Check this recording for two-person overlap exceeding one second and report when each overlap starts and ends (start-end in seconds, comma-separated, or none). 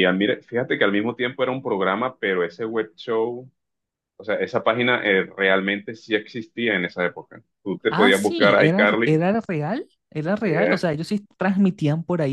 7.9-9.2